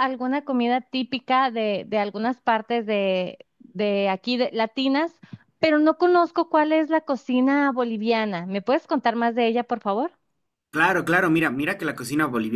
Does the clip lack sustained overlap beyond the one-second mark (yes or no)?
yes